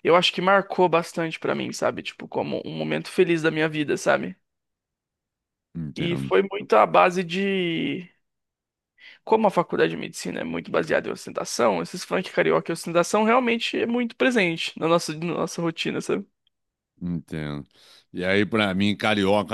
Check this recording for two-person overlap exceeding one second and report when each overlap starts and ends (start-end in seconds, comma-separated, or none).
none